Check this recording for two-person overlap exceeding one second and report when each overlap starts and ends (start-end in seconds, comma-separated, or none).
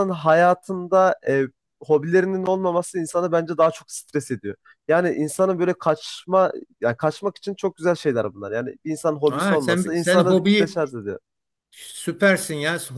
9.3-10.8